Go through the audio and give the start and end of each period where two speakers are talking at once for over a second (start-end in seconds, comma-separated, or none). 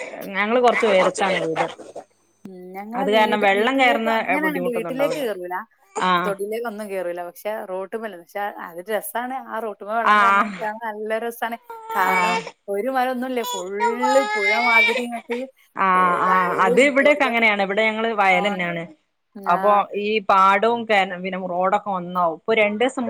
3.0-5.2